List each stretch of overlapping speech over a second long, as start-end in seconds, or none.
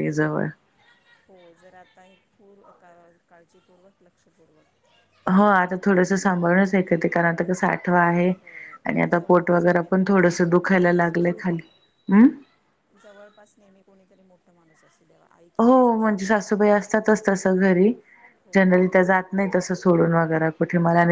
9.1-11.6